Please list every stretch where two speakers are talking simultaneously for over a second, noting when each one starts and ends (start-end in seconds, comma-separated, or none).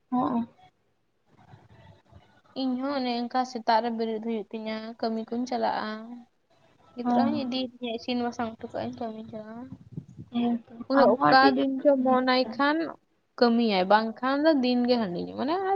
10.3-12.8